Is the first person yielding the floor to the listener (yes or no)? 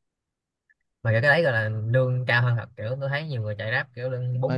yes